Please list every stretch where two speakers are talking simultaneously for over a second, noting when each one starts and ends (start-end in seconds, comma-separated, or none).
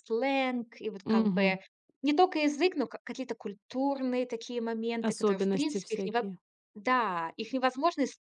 5.0-6.3